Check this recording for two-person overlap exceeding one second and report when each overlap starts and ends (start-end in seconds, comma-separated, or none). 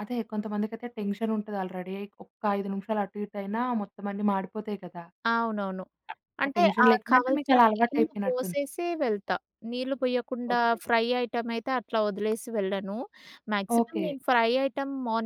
6.5-8.6